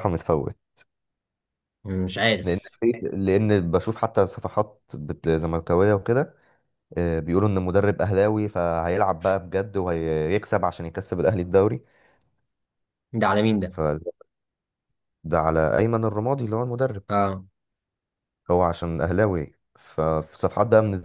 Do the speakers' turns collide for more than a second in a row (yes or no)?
no